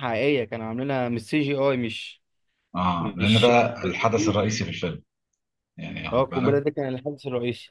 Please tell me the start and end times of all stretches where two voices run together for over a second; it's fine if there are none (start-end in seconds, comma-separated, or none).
3.0-4.4